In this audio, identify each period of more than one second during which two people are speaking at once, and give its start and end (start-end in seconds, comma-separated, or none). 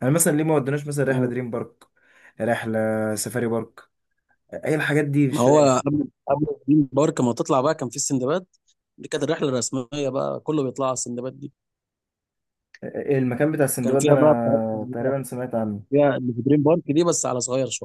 13.8-15.1